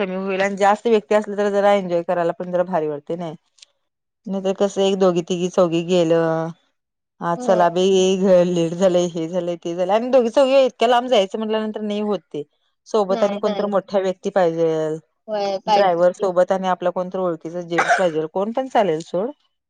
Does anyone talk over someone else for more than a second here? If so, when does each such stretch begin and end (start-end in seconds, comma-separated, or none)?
none